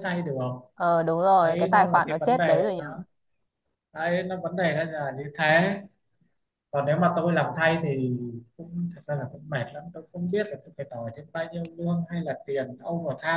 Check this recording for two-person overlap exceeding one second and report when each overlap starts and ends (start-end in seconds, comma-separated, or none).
1.4-2.8